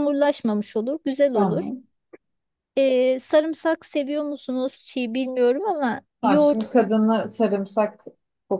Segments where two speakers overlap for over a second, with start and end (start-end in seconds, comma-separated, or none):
none